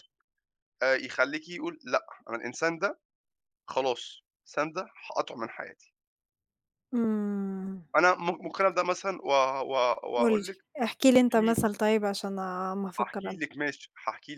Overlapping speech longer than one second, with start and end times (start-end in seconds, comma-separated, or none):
none